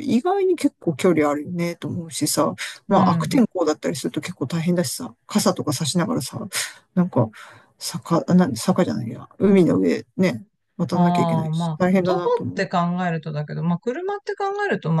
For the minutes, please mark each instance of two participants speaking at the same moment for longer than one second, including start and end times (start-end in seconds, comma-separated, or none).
10.9-12.7